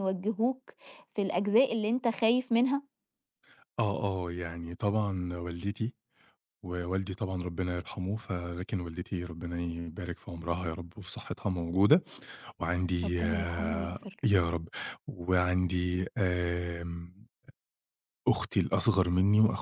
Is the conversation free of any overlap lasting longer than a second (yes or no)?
no